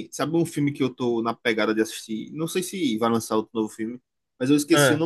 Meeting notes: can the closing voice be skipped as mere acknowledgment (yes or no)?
yes